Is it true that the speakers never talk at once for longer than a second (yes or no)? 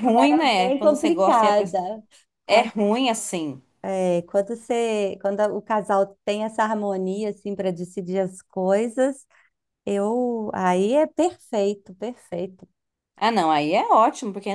no